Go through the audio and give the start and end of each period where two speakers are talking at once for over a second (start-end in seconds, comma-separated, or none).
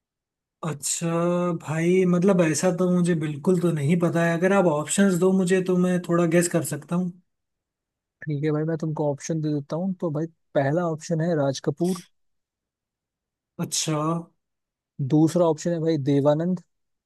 none